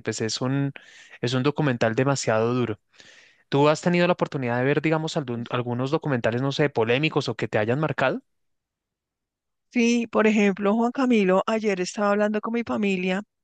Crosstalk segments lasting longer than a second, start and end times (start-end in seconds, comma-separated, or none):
none